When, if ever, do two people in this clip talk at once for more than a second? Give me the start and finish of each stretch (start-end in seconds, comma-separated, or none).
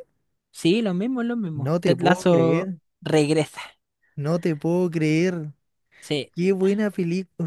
1.6-2.8